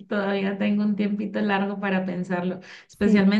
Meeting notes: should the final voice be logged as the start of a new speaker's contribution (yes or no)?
no